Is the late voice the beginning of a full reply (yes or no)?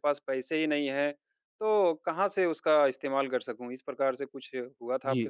yes